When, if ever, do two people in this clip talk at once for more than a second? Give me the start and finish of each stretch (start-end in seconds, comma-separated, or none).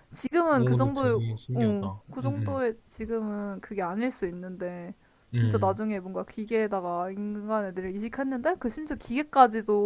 0.5-2.6